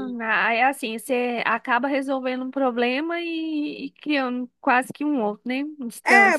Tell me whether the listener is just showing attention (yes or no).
no